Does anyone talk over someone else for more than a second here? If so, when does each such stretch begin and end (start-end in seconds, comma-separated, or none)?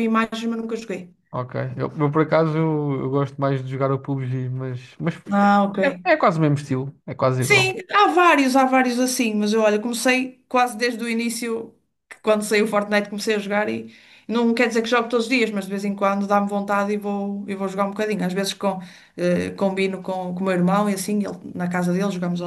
none